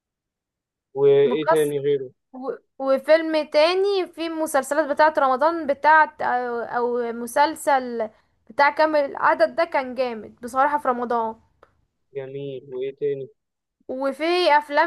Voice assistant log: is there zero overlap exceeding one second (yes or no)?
yes